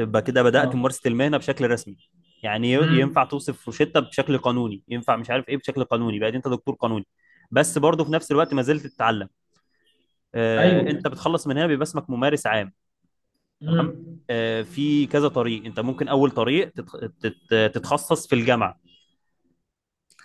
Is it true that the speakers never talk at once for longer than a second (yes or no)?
yes